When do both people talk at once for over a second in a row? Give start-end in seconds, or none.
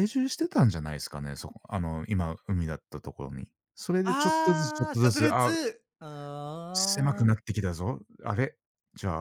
4.0-5.5